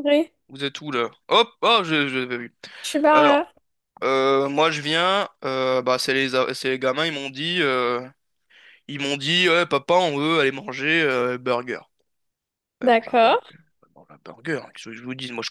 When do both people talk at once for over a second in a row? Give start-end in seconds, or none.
none